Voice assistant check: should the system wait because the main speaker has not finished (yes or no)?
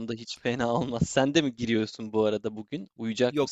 no